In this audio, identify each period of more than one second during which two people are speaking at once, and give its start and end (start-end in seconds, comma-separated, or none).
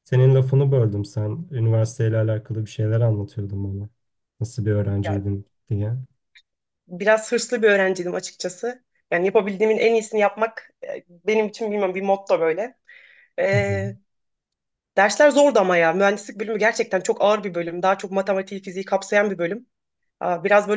none